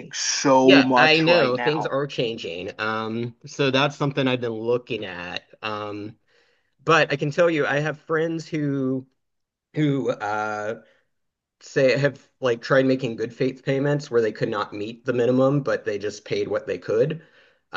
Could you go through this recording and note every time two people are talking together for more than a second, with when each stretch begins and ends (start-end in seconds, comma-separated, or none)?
0.6-1.9